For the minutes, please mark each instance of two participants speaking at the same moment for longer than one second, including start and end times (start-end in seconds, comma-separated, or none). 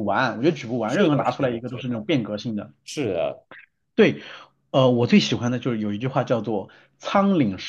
0.8-2.1